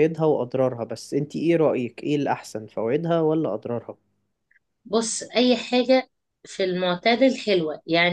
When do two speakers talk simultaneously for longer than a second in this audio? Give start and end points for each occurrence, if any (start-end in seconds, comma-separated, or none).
none